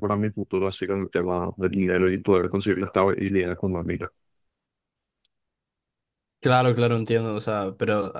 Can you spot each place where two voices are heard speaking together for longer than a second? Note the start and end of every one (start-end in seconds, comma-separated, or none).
none